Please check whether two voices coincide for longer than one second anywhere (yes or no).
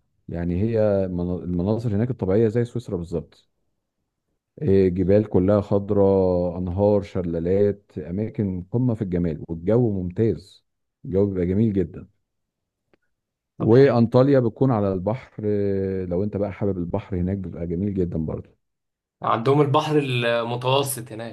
no